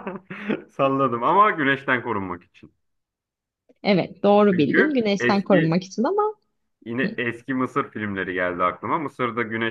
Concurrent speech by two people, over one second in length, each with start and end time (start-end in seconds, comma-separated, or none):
4.5-5.8